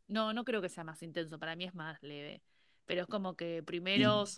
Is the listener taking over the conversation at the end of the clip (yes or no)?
no